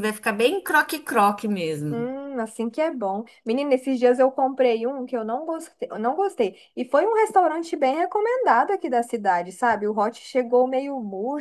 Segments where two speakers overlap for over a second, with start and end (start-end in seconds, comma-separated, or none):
none